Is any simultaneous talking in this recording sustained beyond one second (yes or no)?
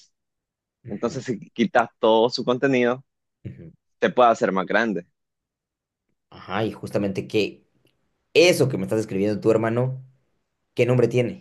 no